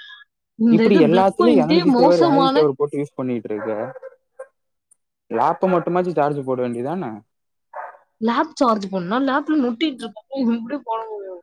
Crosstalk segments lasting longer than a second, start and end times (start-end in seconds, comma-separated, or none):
0.7-2.6